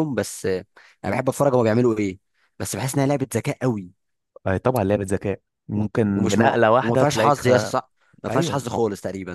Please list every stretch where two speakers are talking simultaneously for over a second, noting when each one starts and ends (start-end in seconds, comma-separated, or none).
6.2-7.5